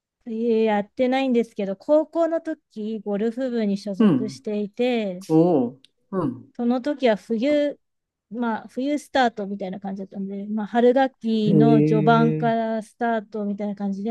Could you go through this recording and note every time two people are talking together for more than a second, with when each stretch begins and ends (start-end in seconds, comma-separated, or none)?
11.5-12.7